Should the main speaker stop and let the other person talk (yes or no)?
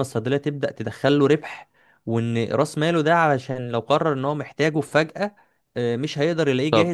yes